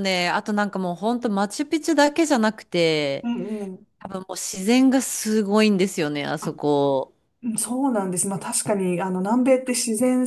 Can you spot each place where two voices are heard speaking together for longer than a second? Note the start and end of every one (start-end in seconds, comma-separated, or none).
none